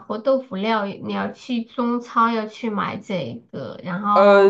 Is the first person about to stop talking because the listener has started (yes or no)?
yes